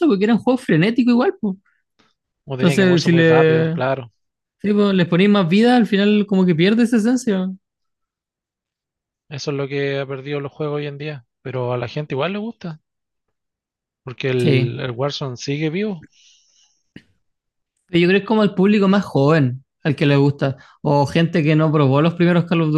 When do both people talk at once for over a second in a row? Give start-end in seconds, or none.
2.6-3.8